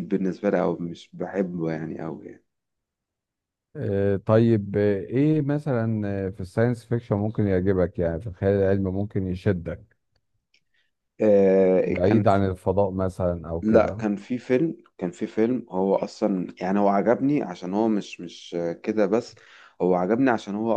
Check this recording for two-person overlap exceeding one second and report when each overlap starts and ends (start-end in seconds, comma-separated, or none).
none